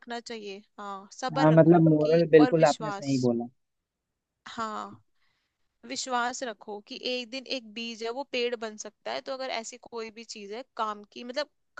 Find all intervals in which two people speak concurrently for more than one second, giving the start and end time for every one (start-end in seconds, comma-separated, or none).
1.4-3.2